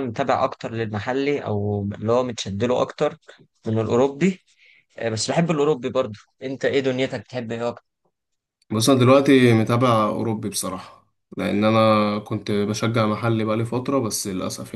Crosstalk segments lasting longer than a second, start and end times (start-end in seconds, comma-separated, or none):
none